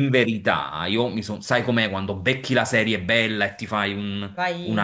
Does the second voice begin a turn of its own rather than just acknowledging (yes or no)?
no